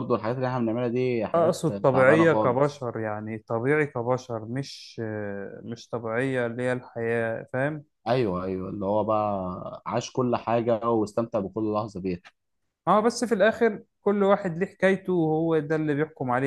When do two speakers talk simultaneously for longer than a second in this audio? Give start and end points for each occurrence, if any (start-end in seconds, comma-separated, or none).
1.4-2.9